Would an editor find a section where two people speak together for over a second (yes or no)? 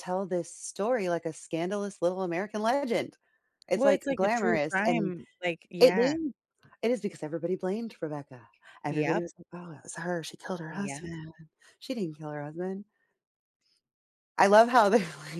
yes